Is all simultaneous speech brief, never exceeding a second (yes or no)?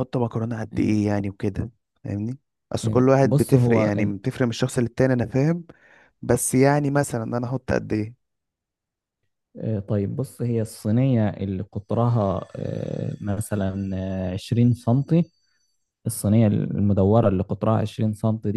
no